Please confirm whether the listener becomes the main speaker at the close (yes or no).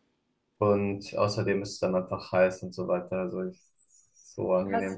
yes